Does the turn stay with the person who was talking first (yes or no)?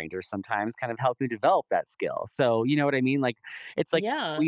yes